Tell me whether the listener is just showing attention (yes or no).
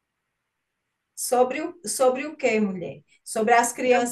yes